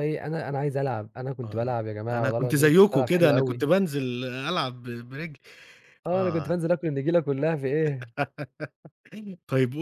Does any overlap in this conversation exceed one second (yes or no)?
yes